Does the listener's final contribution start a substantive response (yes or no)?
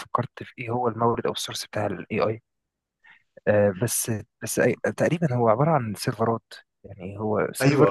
yes